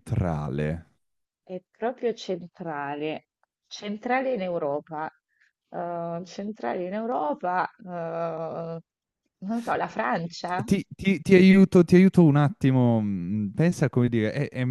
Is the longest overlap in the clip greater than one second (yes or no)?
no